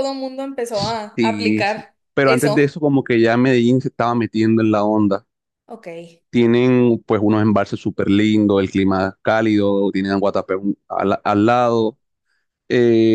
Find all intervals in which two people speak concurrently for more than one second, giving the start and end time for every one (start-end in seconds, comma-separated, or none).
1.2-2.7